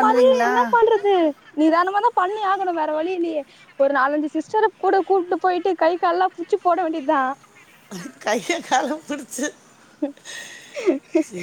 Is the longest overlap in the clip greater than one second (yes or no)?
no